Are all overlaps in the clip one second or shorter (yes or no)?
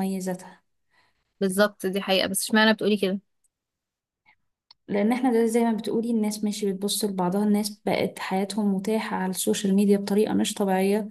yes